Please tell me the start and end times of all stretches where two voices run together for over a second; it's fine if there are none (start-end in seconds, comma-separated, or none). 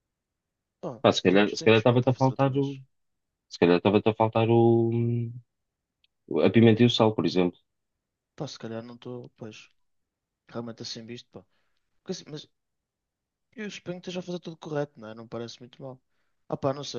1.0-2.6